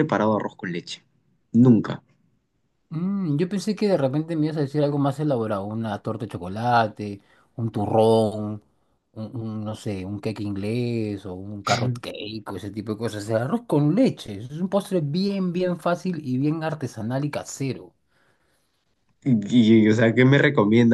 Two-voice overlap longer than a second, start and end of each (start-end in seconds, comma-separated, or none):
none